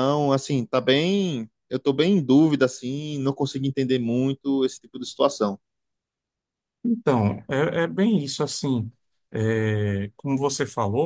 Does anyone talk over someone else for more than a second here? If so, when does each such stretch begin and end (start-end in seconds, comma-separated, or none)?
none